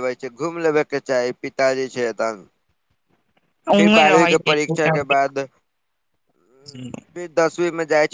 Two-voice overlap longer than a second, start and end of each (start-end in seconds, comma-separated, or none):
3.8-5.1